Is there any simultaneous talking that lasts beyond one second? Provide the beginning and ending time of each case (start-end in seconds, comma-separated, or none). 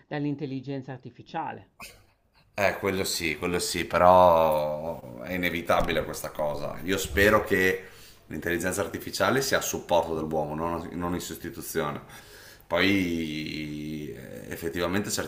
none